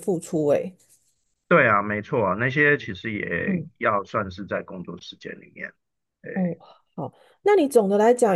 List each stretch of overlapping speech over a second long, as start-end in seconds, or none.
none